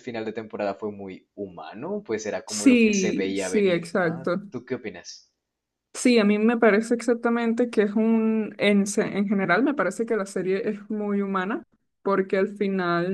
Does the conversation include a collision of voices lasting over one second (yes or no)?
yes